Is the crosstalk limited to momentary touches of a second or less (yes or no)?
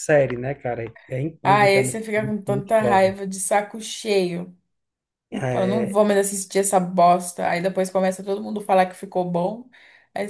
no